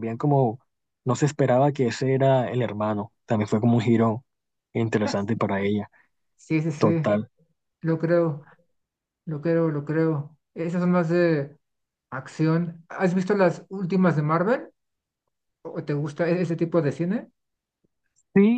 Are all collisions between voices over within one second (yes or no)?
yes